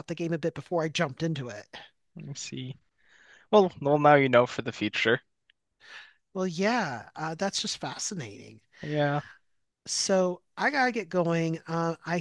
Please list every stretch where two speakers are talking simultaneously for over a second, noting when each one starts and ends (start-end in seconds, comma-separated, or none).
none